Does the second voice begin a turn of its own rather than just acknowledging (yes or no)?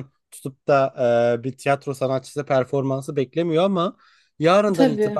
no